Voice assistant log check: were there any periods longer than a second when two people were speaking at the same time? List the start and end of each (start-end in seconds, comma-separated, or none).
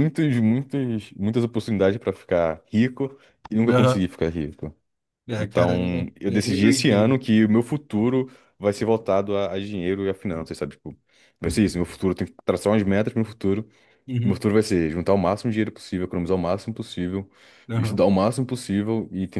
5.4-7.2